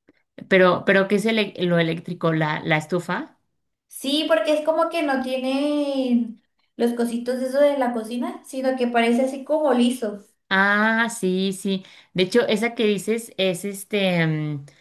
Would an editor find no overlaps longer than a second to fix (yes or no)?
yes